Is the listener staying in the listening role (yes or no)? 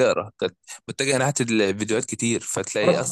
yes